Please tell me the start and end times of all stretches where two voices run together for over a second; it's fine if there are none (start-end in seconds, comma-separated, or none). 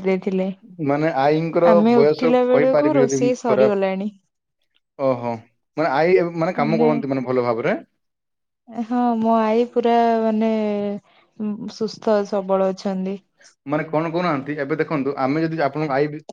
2.0-3.9